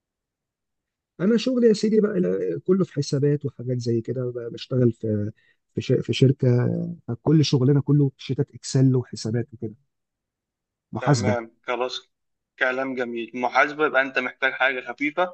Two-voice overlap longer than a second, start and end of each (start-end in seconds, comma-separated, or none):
none